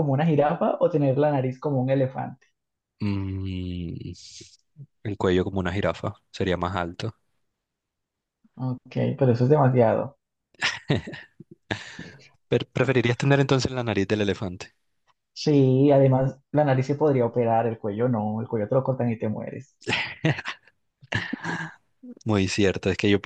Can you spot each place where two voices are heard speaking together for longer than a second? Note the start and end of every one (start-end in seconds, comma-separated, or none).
none